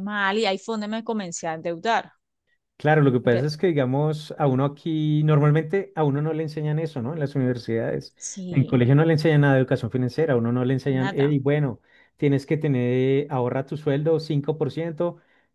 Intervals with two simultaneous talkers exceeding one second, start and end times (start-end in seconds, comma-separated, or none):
none